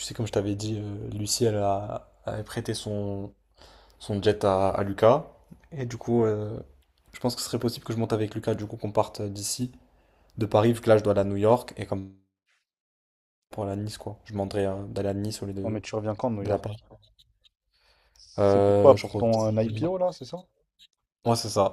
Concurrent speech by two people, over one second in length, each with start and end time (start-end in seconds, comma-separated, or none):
18.4-19.9